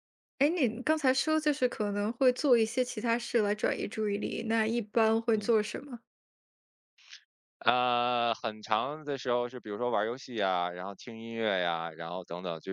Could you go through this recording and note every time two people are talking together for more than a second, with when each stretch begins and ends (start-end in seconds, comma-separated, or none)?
none